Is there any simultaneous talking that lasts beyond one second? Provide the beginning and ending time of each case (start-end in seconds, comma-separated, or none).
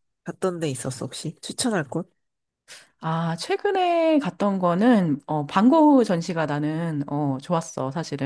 none